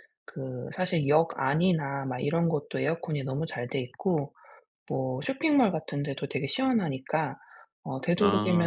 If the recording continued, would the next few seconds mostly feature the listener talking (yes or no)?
no